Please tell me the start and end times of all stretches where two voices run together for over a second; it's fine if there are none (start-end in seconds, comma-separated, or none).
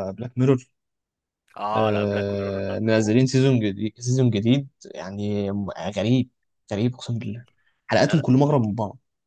1.8-3.2